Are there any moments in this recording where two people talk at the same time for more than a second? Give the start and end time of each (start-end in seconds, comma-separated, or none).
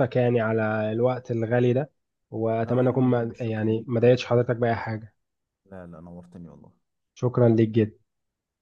2.6-4.1